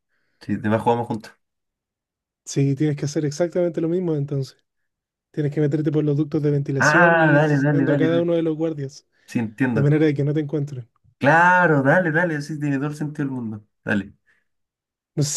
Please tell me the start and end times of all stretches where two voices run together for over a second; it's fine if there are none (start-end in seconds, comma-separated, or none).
6.8-8.3